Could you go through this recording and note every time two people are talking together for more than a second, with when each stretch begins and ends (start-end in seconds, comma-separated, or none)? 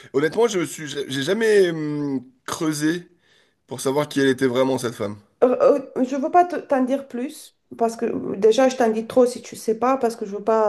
none